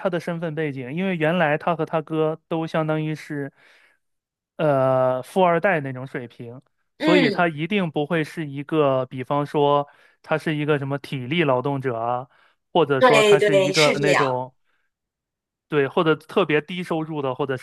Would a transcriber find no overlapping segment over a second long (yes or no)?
no